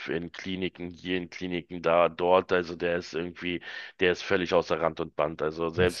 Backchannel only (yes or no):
yes